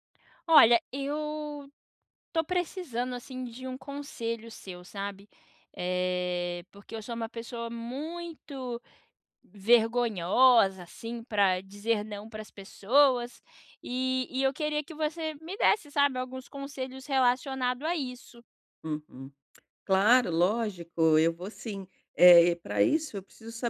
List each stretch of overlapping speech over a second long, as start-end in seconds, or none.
none